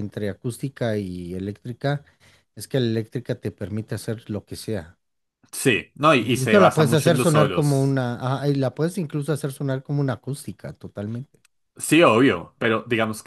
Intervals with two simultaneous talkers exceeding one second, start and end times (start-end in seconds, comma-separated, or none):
6.2-8.0